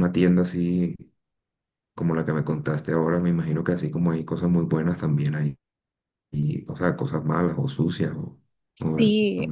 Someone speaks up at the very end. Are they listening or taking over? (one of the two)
taking over